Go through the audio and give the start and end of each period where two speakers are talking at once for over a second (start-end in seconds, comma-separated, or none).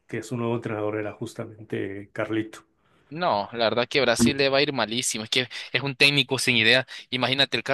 none